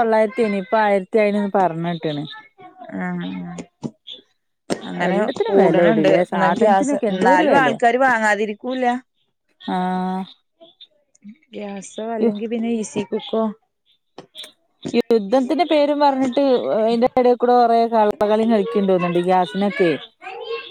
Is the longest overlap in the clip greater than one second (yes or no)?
yes